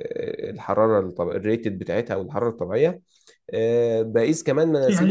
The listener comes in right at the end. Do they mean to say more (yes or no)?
yes